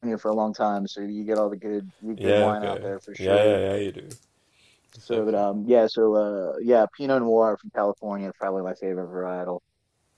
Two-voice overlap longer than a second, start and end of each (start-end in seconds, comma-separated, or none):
2.1-3.6